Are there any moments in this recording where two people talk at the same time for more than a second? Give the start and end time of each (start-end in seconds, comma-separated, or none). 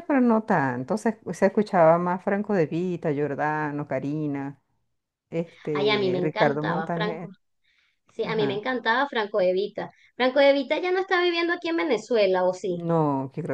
5.7-7.3